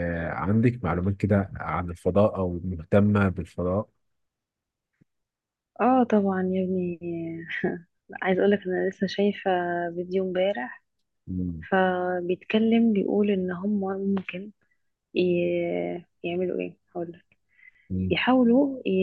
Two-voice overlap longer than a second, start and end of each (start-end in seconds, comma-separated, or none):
none